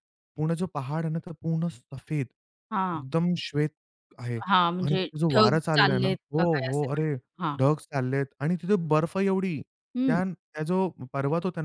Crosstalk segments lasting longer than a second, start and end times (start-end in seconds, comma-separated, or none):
4.8-7.1